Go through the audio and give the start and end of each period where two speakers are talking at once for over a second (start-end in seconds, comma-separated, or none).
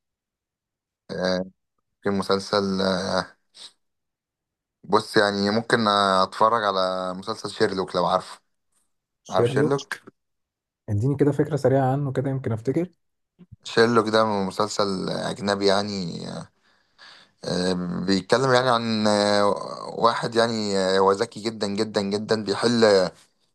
none